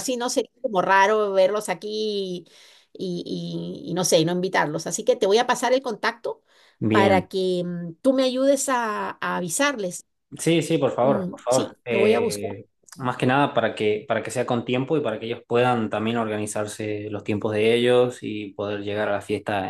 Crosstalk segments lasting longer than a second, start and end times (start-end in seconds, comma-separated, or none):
11.0-12.5